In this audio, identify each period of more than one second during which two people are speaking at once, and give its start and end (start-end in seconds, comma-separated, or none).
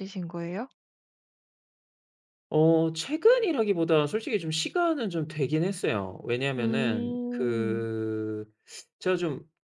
6.6-7.9